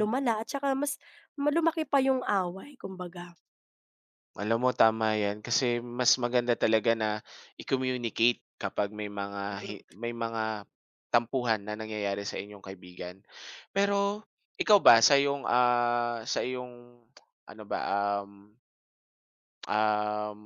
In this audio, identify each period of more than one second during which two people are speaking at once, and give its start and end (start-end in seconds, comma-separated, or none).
none